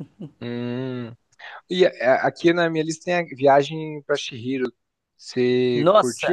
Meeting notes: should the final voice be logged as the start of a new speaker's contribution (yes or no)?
yes